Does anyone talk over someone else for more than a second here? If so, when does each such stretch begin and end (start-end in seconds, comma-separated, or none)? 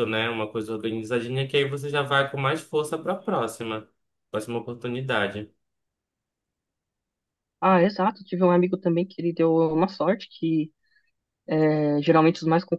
none